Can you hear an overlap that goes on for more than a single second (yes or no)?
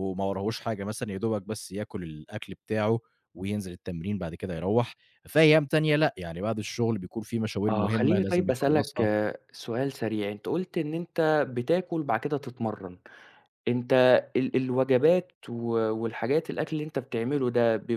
yes